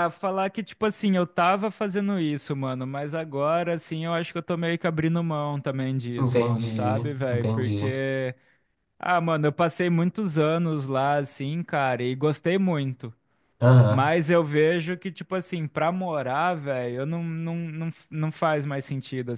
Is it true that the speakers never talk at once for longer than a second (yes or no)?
no